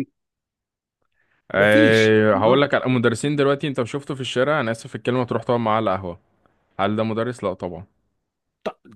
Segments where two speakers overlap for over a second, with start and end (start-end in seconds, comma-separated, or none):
1.5-3.0